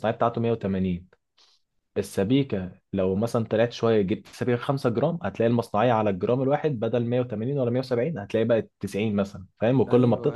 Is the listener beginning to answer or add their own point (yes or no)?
yes